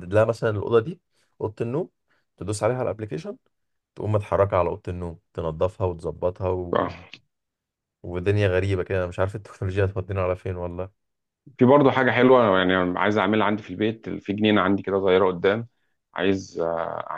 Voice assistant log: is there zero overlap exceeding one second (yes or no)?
yes